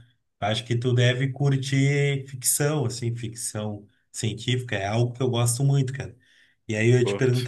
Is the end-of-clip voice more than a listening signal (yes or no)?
no